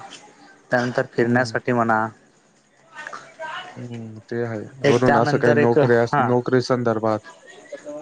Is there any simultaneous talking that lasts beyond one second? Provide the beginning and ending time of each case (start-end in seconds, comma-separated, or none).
4.9-6.2